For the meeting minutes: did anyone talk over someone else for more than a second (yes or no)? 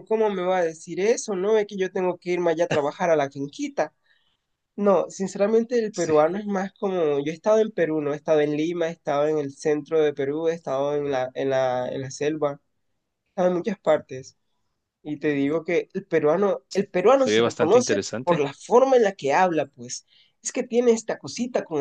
yes